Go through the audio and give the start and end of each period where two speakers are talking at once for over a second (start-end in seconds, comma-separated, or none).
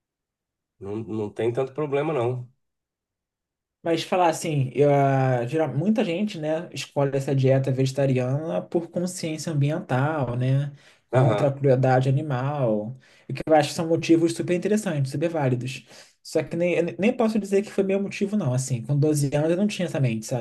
none